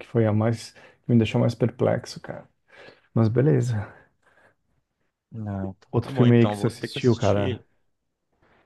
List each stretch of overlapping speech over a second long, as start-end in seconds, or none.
5.9-7.6